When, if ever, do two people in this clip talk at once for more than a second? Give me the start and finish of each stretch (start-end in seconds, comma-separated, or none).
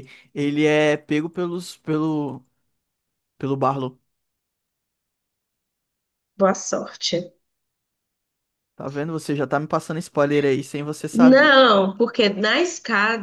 none